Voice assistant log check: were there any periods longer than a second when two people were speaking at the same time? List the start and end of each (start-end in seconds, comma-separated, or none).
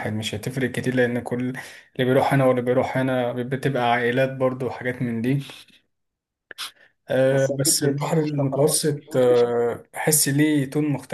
7.3-9.5